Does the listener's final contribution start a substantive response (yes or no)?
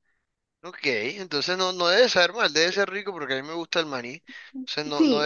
yes